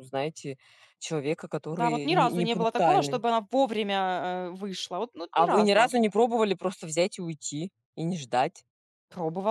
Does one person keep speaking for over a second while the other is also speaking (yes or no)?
yes